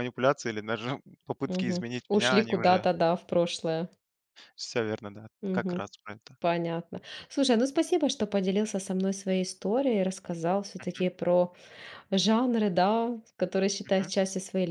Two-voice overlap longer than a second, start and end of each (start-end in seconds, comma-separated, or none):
1.4-2.9